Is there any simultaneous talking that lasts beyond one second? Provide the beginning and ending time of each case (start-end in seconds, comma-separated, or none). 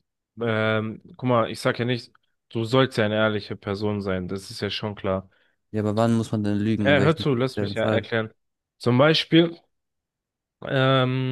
6.8-8.1